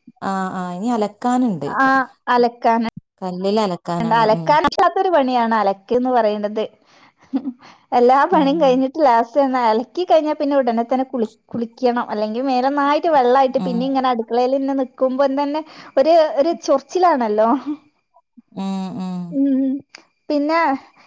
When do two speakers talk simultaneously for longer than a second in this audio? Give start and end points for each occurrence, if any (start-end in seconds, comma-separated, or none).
none